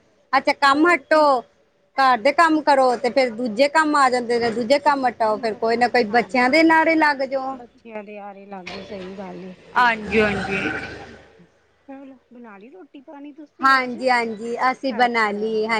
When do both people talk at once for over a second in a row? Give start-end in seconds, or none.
4.7-6.7